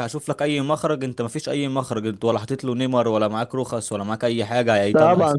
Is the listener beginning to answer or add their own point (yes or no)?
yes